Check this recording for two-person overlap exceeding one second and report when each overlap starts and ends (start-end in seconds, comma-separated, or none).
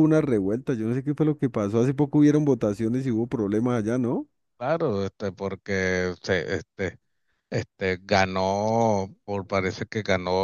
none